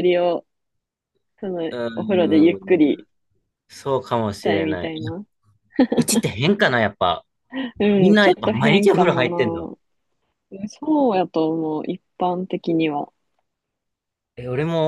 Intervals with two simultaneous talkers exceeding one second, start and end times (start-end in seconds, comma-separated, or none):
8.0-9.7